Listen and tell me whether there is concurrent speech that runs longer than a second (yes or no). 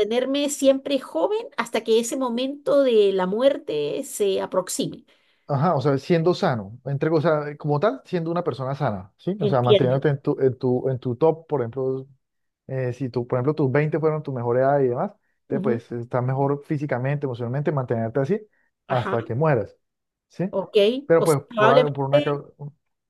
yes